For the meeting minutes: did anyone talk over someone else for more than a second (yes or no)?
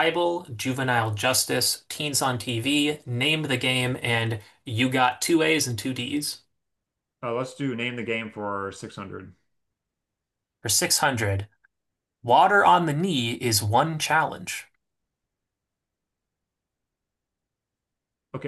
no